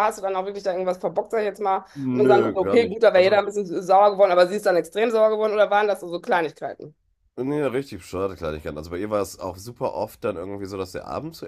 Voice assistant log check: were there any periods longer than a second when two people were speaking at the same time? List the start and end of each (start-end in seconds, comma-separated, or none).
1.9-3.4